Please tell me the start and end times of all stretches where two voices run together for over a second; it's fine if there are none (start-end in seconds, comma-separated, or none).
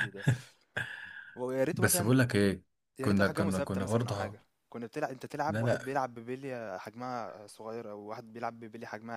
3.0-4.4